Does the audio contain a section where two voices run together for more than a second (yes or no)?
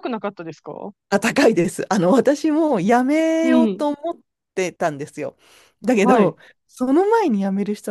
no